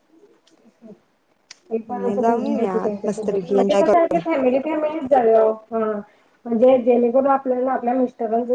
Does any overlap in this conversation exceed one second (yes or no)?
yes